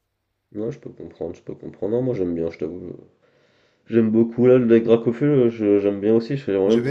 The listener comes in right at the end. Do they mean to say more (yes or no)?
yes